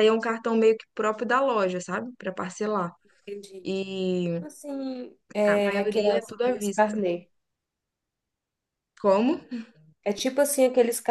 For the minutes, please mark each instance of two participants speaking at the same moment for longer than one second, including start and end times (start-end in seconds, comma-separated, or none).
5.5-7.0